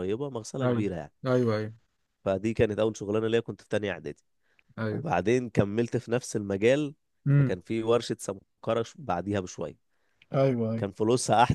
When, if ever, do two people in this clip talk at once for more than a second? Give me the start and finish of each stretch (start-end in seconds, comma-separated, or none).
none